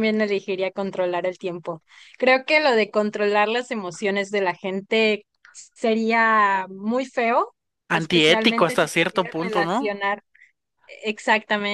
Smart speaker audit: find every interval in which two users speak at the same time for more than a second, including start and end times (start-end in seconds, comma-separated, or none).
7.9-10.0